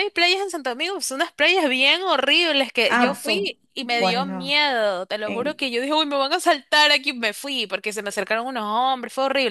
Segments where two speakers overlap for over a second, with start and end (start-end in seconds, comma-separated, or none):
2.9-4.6